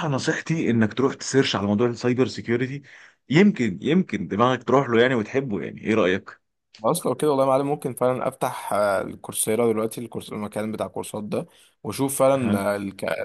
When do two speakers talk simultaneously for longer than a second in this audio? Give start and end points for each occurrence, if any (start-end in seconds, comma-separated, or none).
none